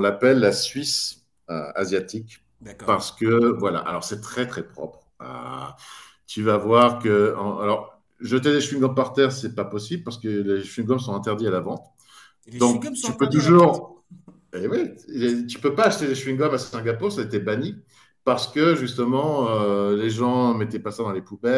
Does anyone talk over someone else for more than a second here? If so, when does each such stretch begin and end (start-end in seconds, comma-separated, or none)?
12.6-13.8